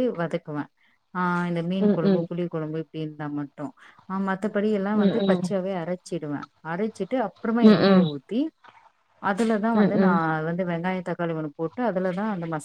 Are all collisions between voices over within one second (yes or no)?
yes